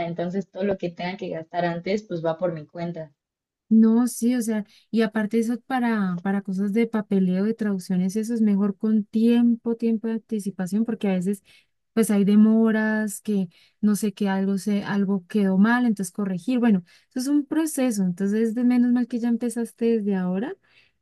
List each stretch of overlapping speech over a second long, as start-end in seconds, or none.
none